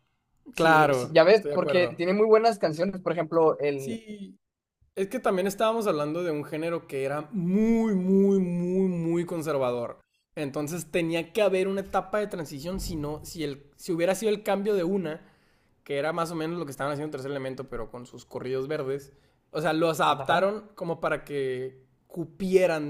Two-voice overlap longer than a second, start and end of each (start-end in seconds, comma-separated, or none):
0.6-2.0